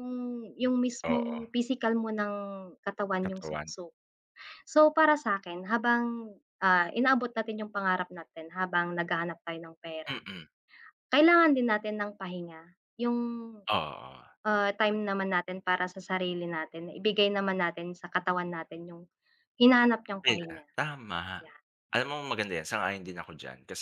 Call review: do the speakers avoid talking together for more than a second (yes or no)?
yes